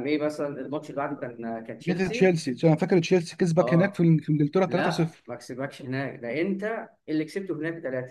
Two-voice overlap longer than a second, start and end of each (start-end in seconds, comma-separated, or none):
none